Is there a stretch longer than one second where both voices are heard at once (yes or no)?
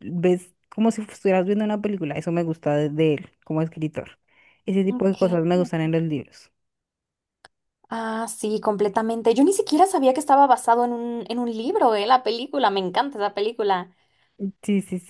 no